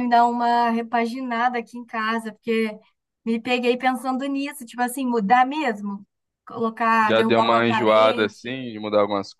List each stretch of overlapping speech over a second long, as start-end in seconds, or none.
7.0-8.6